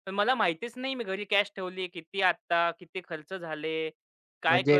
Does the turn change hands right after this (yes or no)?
yes